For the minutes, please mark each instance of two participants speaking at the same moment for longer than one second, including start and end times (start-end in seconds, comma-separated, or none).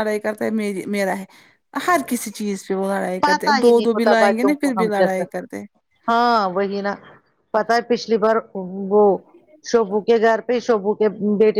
3.2-5.2